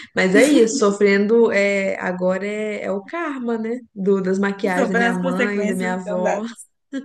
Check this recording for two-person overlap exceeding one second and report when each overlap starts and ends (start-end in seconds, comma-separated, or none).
4.7-6.4